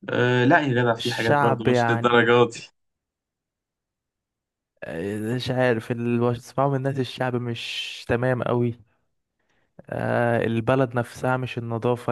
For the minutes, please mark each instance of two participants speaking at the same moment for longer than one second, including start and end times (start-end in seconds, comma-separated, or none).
1.0-2.3